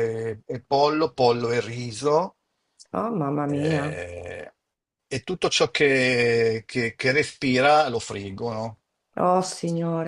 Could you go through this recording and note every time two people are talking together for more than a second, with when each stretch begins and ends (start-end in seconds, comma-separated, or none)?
none